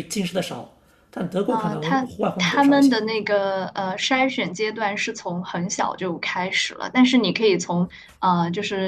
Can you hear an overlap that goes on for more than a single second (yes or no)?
yes